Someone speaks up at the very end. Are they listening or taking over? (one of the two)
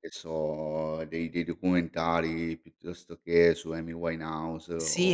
taking over